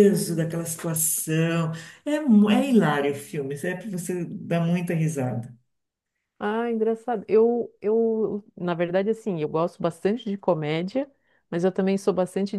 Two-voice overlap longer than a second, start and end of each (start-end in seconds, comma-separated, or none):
none